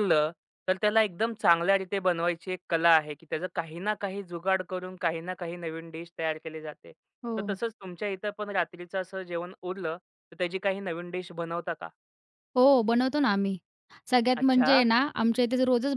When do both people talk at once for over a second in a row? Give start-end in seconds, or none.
none